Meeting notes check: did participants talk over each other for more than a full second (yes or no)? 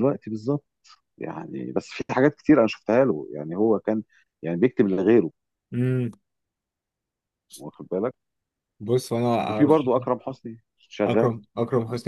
no